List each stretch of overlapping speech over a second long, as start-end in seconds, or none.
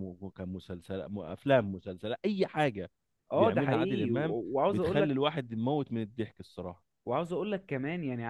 3.3-5.2